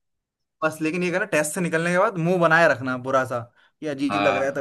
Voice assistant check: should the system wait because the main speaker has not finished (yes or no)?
yes